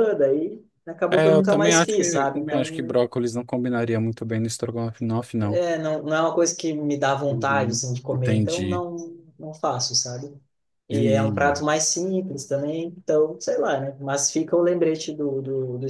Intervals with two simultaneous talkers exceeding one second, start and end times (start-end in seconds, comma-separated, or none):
1.1-2.9, 7.3-8.8